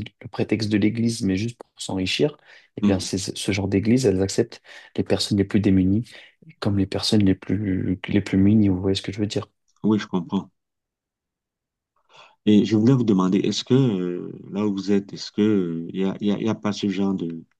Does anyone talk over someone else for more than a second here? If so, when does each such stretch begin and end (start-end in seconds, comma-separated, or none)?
none